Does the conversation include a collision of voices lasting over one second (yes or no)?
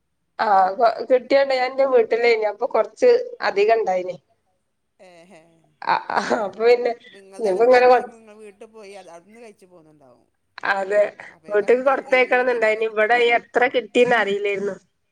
yes